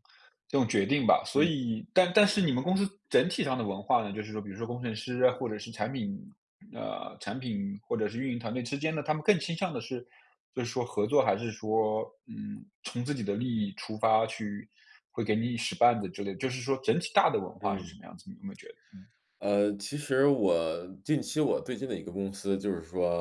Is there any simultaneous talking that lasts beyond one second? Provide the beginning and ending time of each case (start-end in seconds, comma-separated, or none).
none